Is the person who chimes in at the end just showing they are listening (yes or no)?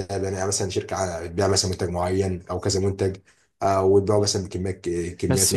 no